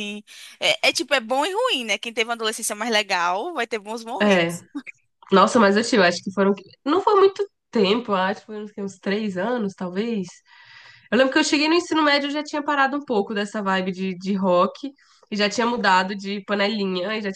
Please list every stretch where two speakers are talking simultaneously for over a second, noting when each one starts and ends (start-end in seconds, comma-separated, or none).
none